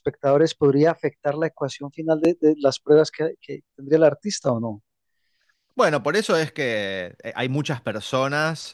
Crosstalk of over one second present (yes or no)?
no